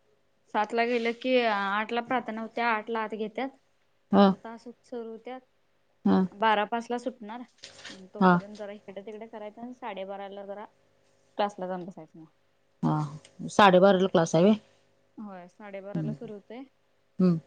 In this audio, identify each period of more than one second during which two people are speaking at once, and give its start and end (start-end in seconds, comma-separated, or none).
none